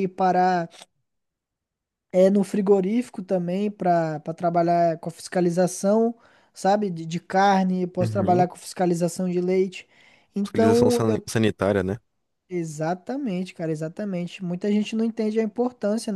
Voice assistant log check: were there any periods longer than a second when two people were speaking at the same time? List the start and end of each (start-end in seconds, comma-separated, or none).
none